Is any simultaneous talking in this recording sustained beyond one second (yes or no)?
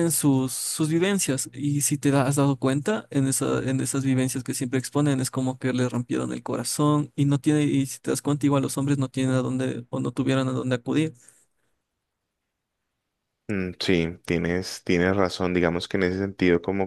no